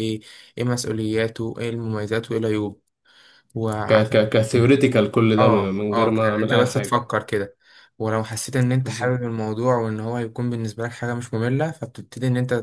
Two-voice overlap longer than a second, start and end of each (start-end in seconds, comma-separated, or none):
5.4-7.1